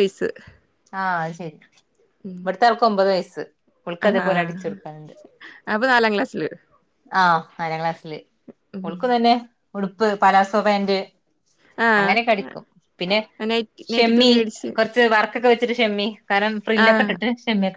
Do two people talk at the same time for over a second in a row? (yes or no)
no